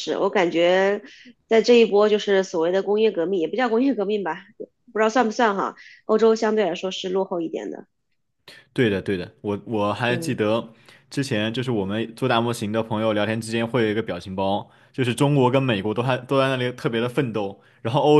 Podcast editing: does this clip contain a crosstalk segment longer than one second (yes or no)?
no